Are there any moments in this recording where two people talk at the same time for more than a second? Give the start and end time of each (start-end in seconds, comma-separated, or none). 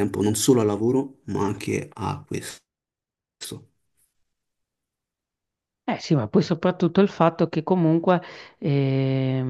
none